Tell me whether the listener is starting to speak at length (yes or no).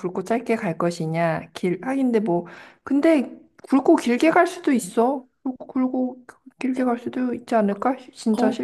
yes